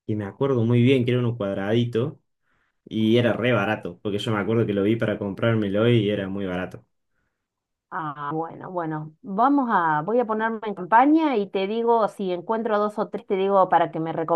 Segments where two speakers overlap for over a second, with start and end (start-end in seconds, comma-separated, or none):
none